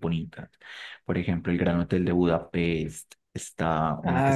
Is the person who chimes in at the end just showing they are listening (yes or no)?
yes